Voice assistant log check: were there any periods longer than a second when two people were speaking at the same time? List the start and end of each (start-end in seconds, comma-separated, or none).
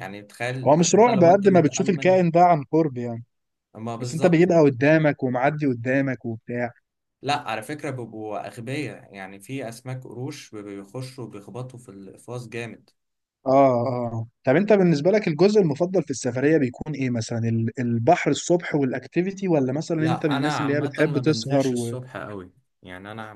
0.7-2.2, 20.0-22.0